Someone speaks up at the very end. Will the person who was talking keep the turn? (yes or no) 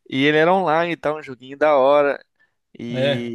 yes